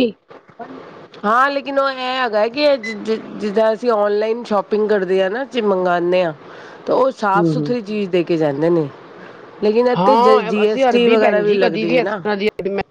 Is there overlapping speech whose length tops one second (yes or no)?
yes